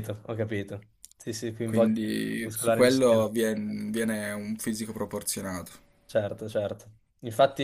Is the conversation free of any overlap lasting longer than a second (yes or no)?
no